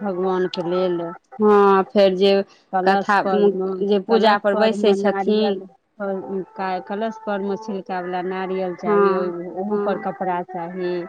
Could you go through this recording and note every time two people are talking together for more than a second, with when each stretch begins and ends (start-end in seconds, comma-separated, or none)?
4.1-5.6